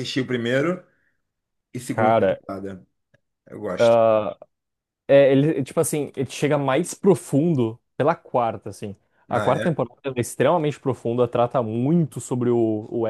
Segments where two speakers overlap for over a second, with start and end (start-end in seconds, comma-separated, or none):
none